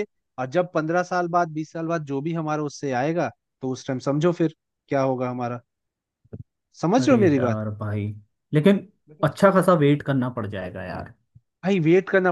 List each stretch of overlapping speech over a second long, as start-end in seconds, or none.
none